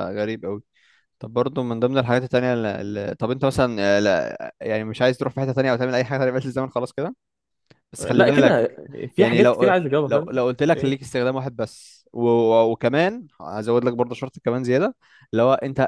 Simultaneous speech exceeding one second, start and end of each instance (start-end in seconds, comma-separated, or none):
9.2-11.1